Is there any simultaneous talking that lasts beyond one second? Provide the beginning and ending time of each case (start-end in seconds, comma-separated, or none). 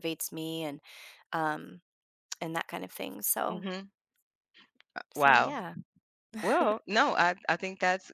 none